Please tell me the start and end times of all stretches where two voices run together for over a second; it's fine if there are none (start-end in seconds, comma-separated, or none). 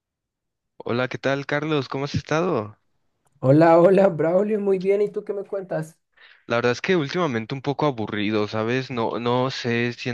none